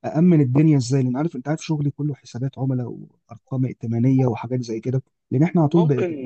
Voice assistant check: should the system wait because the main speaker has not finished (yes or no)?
yes